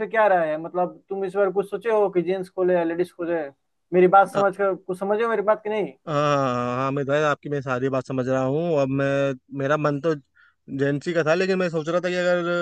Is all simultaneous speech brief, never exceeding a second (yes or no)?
yes